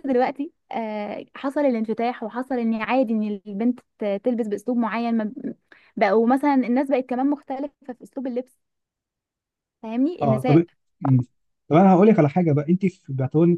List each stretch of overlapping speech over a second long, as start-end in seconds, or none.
none